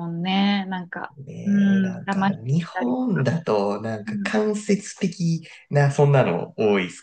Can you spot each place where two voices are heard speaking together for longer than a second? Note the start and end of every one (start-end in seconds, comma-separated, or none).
1.3-3.0